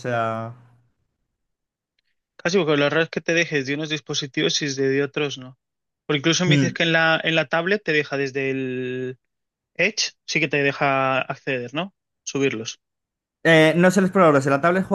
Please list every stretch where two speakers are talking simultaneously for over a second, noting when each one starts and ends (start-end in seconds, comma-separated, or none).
none